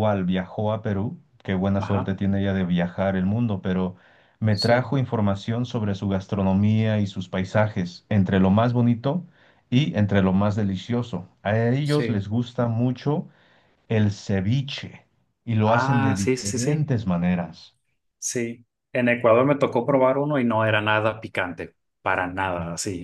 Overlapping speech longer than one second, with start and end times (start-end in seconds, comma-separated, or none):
15.6-16.9